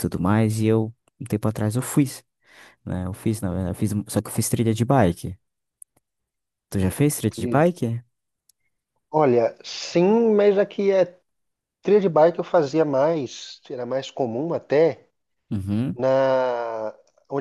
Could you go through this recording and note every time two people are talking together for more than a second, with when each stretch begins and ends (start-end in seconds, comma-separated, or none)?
none